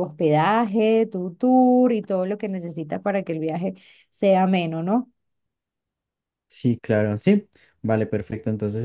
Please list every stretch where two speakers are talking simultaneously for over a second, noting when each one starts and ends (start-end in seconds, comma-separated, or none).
none